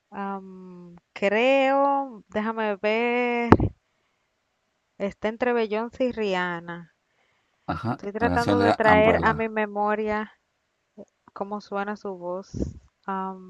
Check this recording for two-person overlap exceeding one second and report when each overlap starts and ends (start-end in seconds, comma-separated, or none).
8.0-9.5